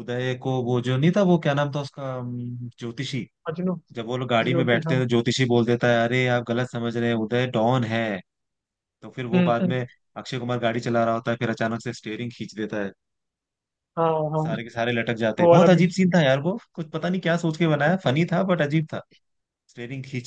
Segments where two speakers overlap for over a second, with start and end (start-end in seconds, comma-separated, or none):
none